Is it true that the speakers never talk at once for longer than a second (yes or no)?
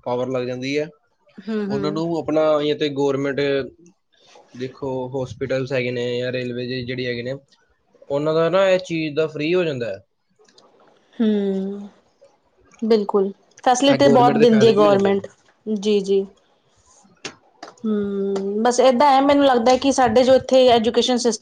no